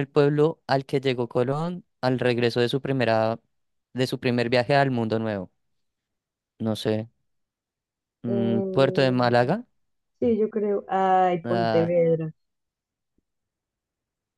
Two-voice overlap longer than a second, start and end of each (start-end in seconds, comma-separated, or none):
8.3-9.6